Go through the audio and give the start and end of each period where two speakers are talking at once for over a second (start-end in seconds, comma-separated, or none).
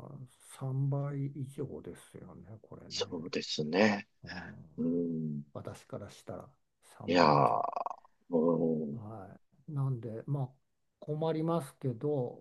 none